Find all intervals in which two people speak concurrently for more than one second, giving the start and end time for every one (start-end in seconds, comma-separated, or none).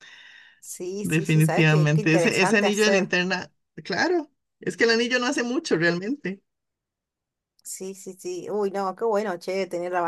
1.0-3.1